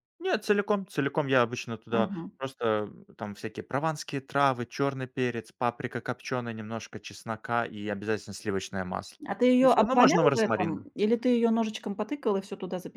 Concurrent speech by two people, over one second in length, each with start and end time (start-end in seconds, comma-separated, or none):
9.6-10.9